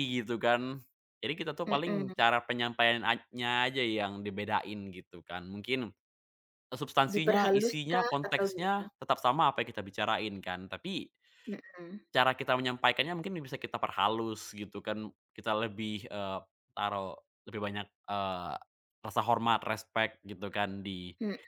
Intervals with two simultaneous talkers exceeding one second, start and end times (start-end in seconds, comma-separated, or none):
7.1-8.8